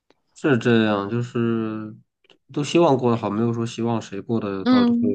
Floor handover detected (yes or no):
yes